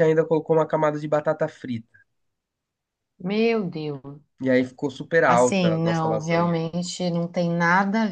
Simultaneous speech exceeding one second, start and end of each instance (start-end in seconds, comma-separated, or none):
5.3-6.6